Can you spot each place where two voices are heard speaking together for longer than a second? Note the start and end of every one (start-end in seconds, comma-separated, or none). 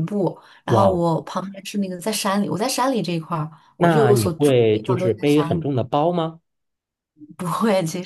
3.8-5.7